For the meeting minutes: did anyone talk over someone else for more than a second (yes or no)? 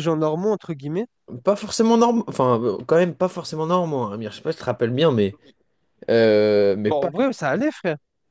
no